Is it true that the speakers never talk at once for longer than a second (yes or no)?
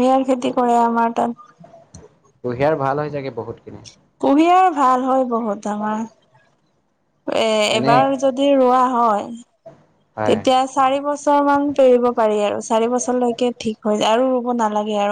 yes